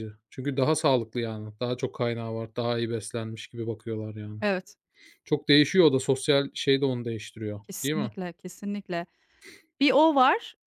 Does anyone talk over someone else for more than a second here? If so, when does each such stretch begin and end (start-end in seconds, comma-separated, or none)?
none